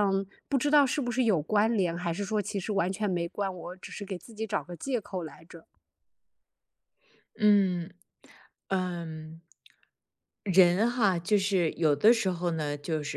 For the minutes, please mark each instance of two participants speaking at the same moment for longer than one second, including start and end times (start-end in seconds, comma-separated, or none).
none